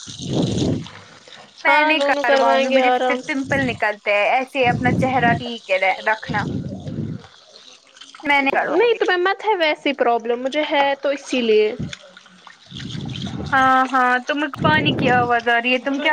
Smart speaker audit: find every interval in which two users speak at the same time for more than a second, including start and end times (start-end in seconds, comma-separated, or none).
1.7-3.4